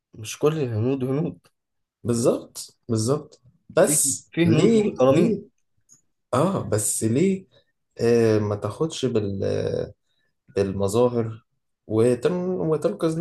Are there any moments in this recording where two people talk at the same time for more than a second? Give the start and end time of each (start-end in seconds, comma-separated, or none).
3.8-5.4